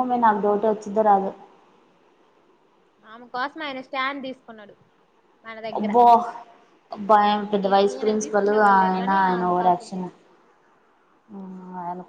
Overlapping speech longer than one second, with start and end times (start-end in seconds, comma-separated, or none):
7.9-10.1